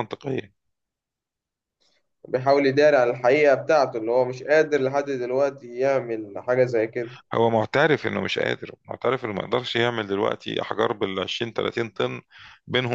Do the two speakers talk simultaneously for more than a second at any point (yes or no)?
no